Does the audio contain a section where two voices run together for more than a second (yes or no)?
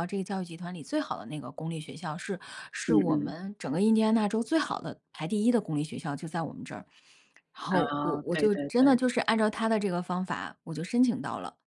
yes